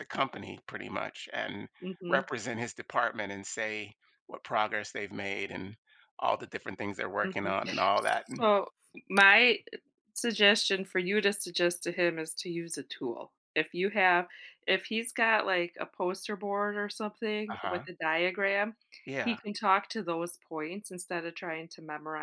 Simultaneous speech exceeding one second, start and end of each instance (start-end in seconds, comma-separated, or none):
none